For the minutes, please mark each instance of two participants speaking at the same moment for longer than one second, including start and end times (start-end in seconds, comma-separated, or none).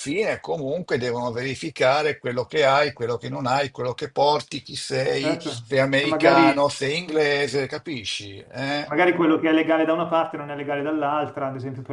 5.1-6.5